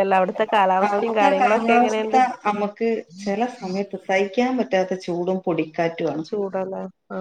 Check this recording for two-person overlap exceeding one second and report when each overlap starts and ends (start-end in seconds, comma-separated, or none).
0.9-2.2